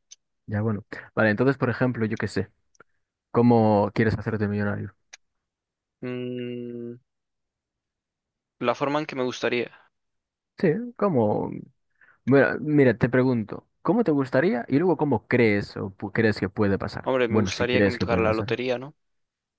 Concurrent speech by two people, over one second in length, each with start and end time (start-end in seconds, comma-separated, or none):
17.0-18.6